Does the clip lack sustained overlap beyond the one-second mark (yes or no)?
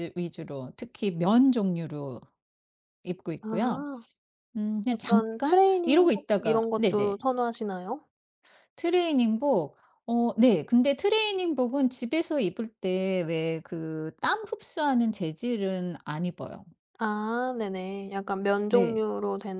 no